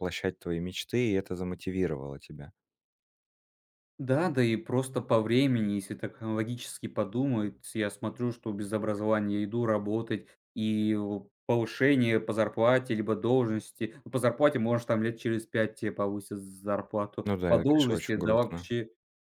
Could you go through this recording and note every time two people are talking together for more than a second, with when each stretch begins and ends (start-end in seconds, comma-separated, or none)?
17.2-18.7